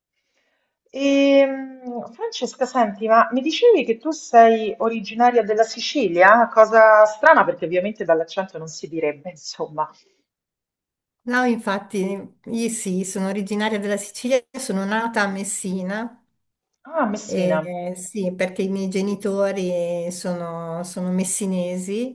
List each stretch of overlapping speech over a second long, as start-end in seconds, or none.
none